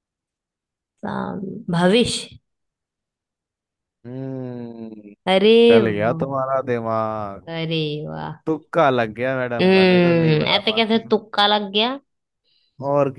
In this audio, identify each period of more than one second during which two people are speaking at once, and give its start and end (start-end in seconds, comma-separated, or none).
9.6-11.1